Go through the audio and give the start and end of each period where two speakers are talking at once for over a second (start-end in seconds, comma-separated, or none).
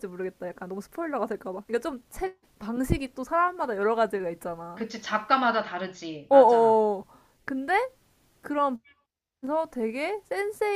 none